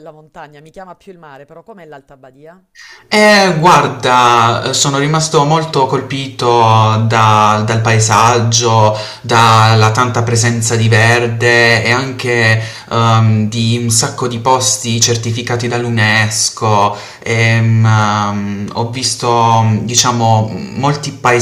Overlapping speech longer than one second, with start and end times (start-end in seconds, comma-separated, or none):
none